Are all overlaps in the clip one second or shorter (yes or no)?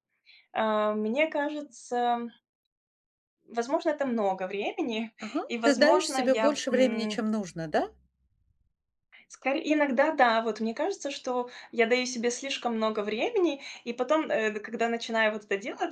no